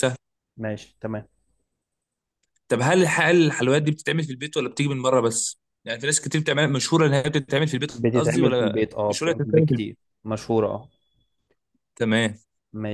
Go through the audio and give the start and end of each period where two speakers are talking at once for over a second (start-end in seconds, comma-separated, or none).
7.9-10.0